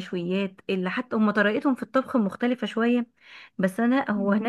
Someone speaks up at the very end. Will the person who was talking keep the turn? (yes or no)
yes